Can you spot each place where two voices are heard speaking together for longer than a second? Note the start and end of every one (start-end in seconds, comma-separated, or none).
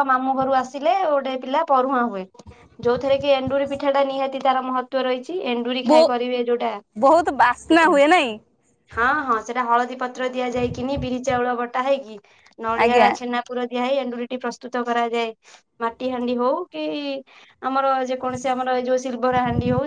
none